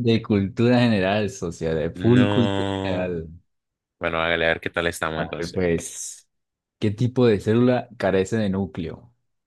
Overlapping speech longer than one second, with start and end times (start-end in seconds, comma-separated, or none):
1.9-3.1